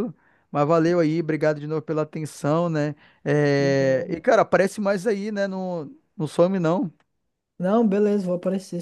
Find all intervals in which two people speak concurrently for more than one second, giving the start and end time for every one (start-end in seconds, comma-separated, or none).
none